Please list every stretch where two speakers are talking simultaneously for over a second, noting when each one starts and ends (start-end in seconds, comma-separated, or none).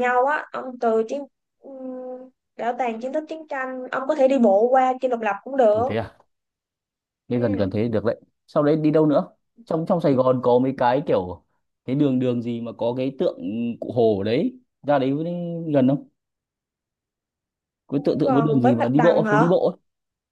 18.0-19.5